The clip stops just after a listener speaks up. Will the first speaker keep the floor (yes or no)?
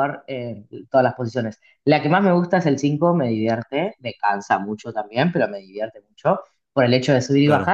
yes